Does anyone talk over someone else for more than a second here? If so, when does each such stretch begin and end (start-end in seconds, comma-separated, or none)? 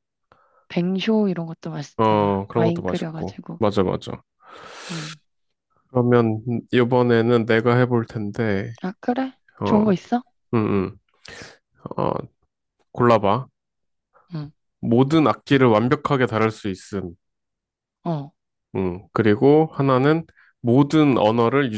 2.0-3.6